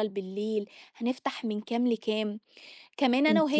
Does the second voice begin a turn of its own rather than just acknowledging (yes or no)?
no